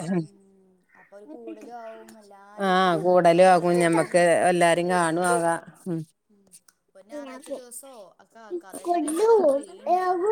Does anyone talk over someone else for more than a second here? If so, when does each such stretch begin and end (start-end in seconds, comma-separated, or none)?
2.7-4.2